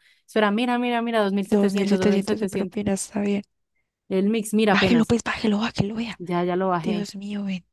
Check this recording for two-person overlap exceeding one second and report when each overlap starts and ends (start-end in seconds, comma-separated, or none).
1.4-2.8